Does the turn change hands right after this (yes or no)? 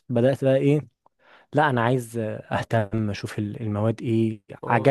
no